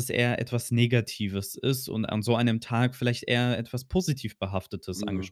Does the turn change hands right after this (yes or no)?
yes